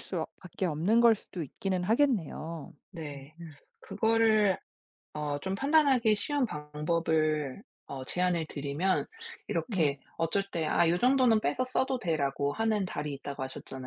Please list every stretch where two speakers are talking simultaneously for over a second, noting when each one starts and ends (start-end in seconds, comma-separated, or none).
none